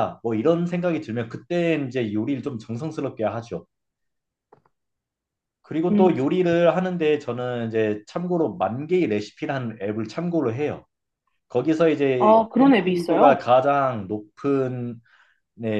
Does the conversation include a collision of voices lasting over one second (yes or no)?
yes